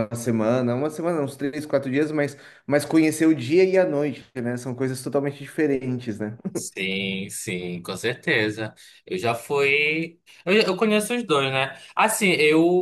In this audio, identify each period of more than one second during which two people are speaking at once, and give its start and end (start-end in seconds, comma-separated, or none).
none